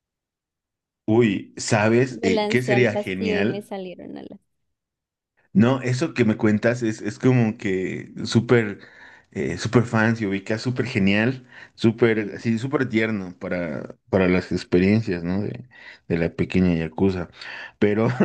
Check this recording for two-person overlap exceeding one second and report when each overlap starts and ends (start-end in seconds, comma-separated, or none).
2.1-3.7